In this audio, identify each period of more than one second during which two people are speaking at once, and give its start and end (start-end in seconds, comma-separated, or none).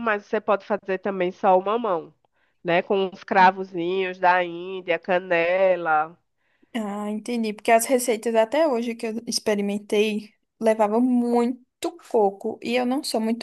none